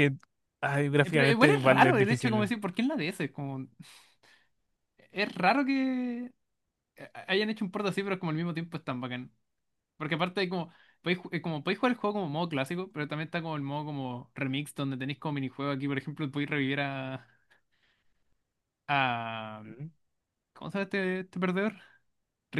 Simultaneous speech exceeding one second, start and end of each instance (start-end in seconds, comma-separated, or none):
1.0-2.5